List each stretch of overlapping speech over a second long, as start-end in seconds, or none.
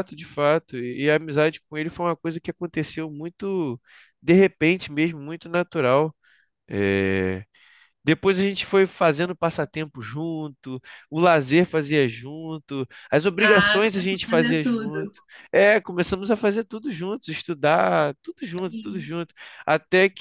13.4-15.1